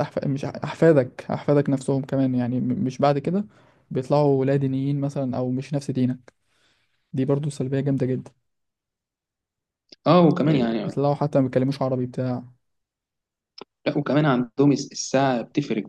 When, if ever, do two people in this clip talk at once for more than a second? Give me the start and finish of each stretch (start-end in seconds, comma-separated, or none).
none